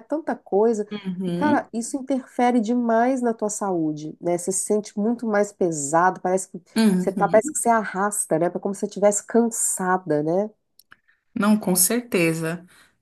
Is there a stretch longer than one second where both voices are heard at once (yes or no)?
no